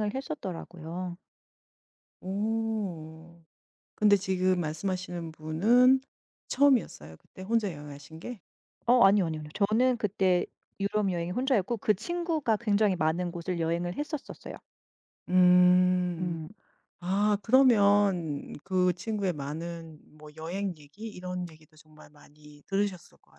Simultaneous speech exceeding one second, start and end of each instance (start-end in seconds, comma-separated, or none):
none